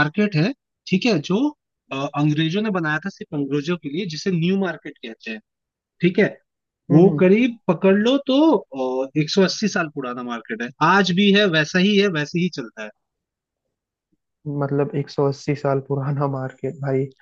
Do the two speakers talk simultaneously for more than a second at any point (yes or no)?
no